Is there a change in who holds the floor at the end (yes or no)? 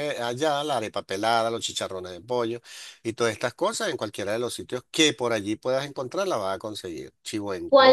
yes